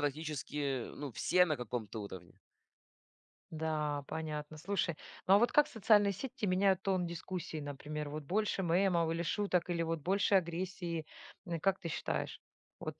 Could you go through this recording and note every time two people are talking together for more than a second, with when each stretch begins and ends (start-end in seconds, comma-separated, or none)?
none